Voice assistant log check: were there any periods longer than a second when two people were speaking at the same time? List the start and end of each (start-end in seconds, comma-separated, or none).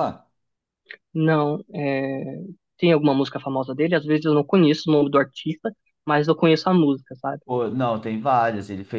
none